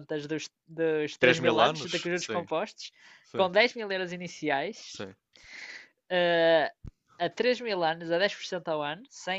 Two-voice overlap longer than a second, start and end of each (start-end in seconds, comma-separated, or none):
1.2-2.5